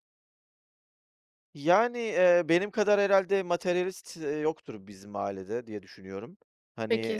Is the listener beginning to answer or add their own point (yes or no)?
yes